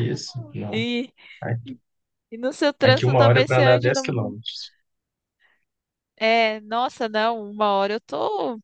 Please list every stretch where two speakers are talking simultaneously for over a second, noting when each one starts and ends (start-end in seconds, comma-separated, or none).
2.8-4.3